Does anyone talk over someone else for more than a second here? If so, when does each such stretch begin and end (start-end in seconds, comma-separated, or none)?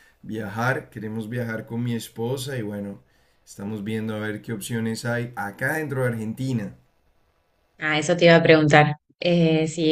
none